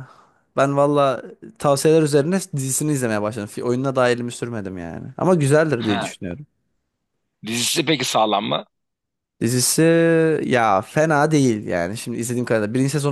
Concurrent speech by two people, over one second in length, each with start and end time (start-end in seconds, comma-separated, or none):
none